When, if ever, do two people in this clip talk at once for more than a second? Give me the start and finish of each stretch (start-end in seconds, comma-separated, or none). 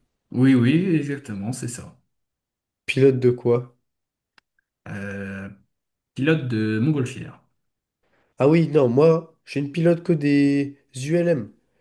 none